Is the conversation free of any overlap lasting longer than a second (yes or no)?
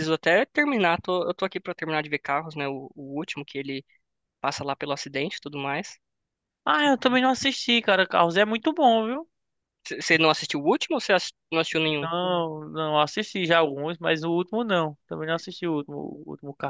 yes